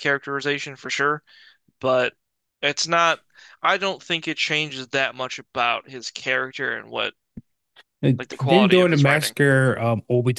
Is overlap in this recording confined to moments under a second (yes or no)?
no